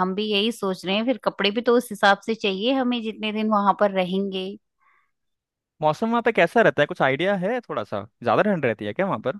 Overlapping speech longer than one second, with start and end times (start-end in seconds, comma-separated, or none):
none